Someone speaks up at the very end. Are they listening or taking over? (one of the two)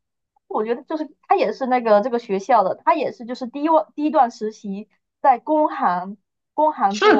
taking over